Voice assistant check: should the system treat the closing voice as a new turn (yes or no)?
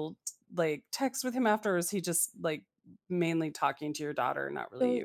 yes